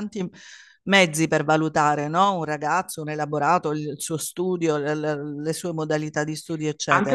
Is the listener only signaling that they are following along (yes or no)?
no